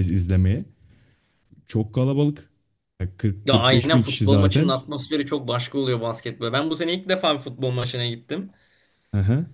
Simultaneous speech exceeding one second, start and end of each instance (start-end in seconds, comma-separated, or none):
3.4-4.7